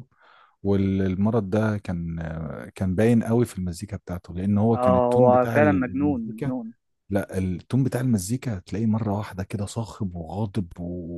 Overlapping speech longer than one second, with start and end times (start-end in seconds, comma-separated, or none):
4.7-6.5